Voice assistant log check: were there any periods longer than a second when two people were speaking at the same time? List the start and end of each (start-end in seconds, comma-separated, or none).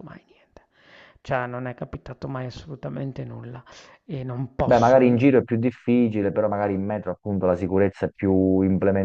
none